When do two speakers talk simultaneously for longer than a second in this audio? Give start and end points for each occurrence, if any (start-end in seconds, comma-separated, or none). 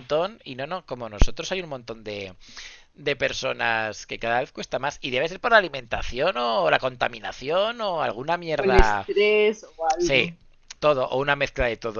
none